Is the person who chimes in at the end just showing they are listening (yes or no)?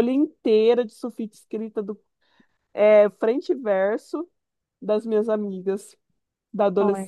no